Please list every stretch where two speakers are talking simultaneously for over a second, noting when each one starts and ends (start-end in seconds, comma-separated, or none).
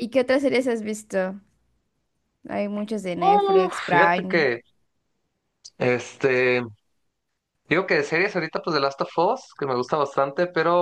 3.2-4.5